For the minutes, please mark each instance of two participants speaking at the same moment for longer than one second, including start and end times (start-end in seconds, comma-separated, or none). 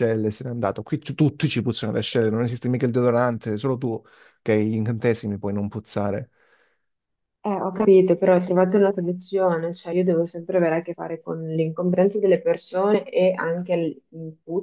none